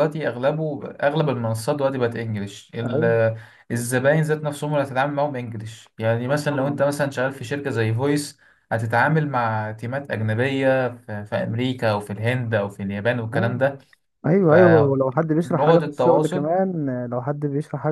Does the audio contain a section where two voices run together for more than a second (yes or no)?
yes